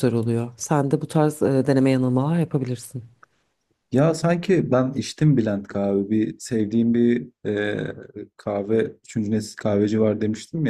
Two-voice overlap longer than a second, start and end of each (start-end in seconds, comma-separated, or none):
none